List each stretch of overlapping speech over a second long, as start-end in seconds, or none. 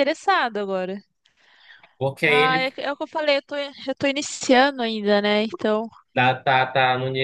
none